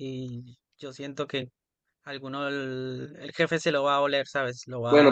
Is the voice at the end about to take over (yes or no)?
yes